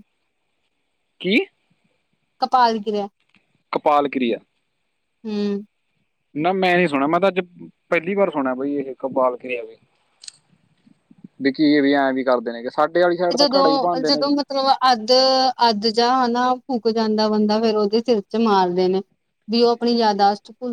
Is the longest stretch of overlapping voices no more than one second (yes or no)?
yes